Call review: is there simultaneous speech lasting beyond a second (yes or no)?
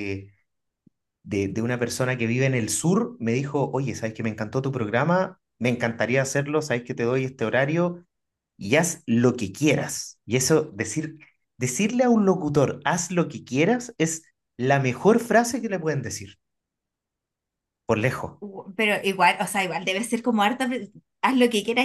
no